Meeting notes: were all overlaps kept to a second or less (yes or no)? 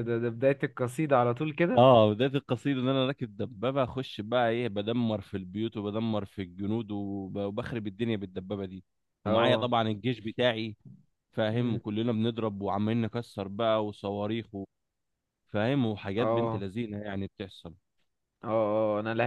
yes